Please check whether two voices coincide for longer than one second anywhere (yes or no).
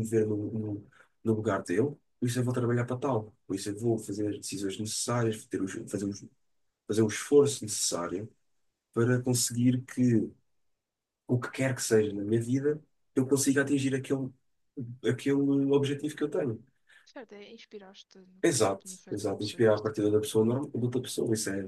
yes